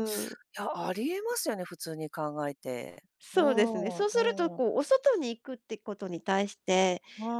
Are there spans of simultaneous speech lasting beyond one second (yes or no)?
yes